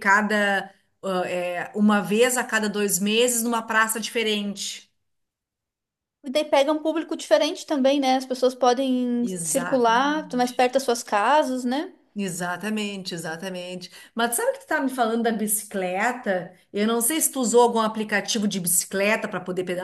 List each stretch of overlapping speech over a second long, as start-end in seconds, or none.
9.2-10.6